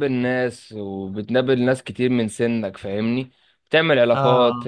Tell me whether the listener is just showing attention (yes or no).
yes